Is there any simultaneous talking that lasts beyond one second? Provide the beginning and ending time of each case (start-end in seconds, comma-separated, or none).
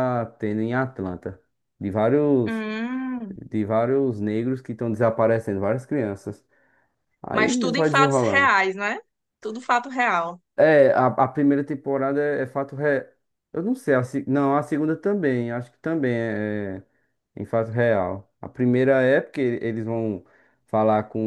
7.3-8.5